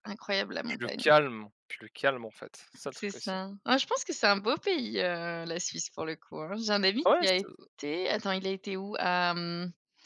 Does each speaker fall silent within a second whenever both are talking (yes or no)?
yes